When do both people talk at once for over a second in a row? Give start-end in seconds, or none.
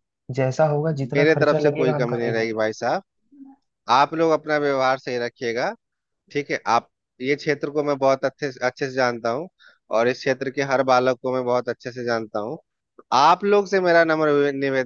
1.1-2.6